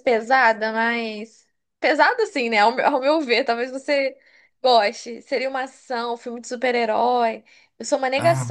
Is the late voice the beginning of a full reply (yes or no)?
no